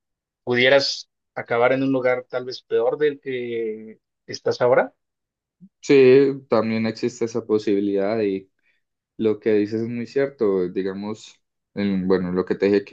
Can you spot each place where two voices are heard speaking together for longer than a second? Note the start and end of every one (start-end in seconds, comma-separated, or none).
none